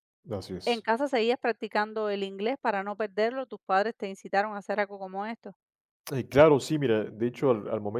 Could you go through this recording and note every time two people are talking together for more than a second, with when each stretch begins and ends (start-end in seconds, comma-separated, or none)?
none